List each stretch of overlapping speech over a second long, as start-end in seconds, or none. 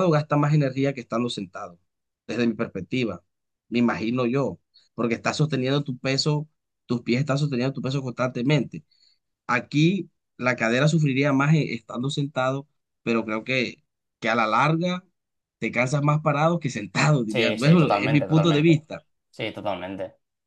17.3-18.7